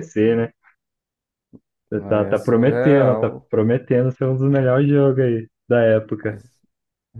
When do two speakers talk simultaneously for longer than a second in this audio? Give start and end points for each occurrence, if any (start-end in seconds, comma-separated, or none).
2.1-3.5